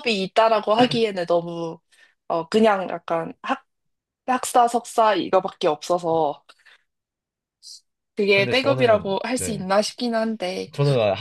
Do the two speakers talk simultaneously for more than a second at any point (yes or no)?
yes